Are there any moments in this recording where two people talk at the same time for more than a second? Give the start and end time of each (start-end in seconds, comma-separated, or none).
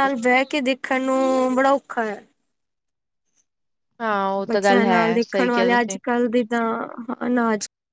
4.5-6.0